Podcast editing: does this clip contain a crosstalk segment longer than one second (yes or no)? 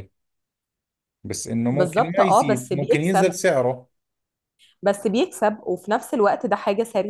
yes